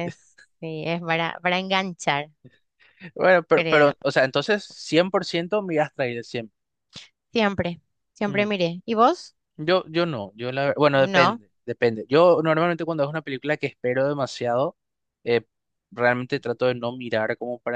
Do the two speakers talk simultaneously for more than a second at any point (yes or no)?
no